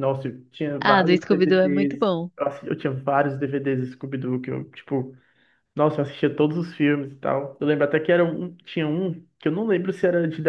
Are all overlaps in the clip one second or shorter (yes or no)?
no